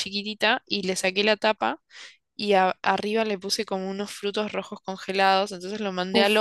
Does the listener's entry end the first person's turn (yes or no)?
no